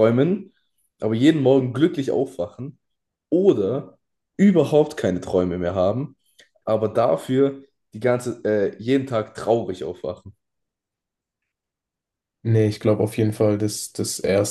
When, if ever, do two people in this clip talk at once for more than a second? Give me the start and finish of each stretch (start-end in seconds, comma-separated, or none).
none